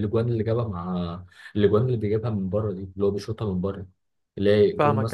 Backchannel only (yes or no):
no